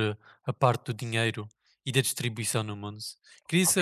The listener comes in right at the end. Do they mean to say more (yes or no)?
no